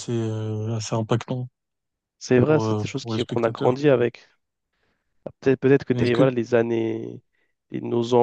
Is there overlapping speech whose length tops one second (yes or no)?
yes